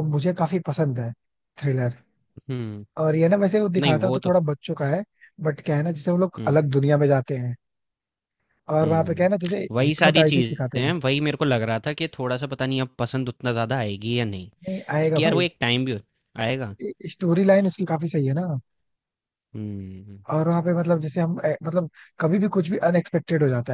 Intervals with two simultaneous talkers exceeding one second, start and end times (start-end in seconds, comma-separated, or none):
8.8-10.9